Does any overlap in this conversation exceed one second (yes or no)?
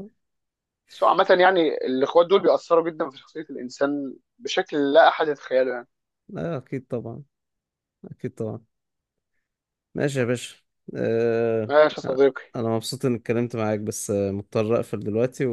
no